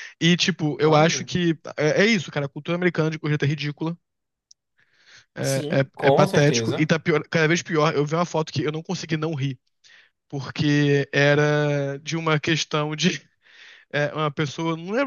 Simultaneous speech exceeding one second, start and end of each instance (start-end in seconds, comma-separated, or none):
5.4-6.9